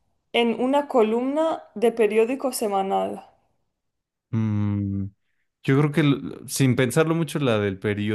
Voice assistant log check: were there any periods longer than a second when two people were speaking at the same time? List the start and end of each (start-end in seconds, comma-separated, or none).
none